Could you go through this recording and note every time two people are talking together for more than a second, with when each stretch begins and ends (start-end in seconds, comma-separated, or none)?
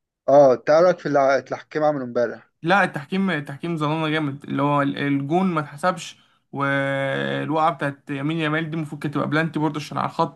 none